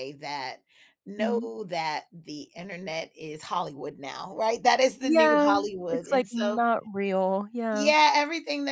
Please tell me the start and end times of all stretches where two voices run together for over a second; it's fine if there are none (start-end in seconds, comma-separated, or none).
5.0-6.6